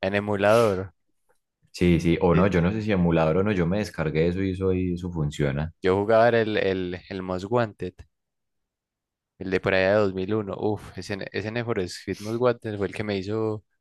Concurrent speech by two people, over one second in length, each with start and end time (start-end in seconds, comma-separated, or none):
none